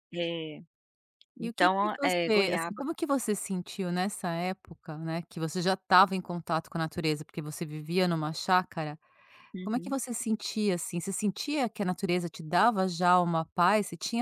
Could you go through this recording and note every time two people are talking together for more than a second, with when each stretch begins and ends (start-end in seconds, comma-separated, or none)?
1.4-2.8